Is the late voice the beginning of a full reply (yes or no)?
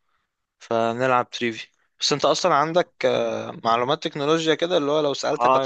yes